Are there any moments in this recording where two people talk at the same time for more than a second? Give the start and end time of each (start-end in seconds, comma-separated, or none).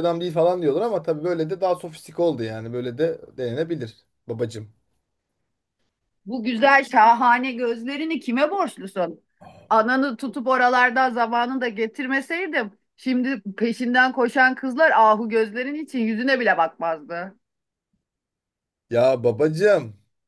none